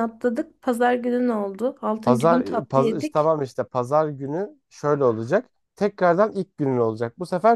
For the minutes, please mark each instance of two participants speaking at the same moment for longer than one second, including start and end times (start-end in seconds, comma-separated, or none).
2.0-3.3